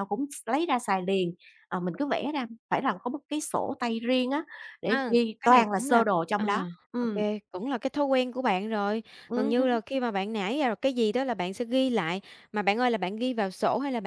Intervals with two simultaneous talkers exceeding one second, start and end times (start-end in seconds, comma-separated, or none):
4.9-7.0